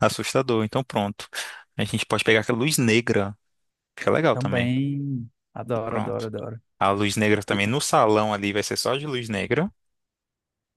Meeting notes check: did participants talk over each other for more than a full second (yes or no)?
no